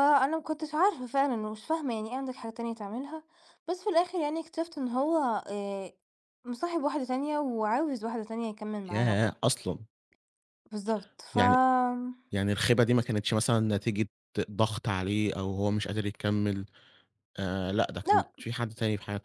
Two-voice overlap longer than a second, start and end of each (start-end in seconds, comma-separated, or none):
none